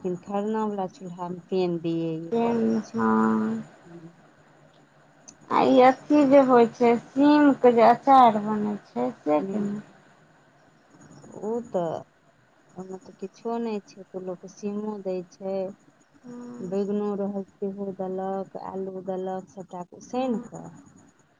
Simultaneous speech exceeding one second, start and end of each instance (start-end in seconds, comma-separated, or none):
2.3-3.6